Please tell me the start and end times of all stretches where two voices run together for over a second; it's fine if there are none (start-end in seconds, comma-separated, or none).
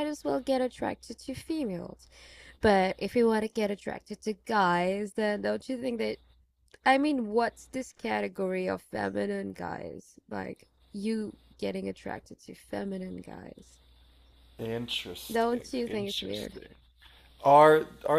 15.3-16.6